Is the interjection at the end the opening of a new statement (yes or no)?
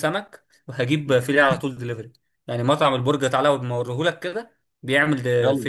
yes